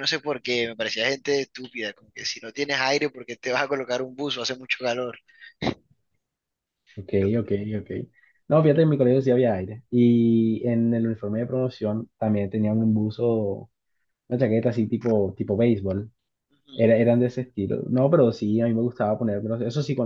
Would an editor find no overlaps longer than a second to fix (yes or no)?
yes